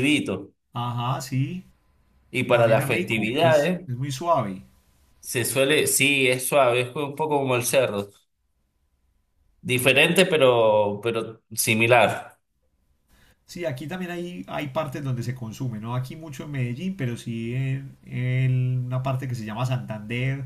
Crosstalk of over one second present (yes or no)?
yes